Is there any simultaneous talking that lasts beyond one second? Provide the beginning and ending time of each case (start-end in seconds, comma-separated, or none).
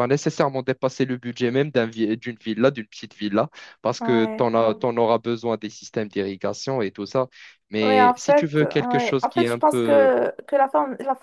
7.8-10.1